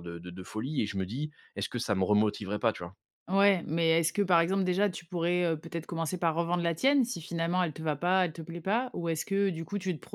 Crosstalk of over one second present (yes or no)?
no